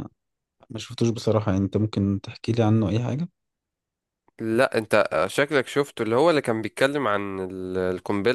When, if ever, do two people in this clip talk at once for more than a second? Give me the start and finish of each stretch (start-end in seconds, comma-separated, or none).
none